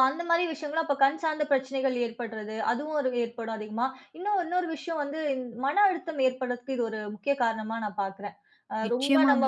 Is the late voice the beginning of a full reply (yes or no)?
no